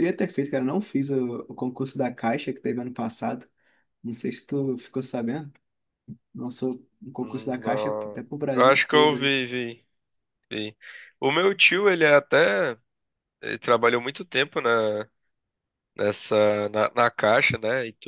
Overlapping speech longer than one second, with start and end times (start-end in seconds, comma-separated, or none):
7.2-9.2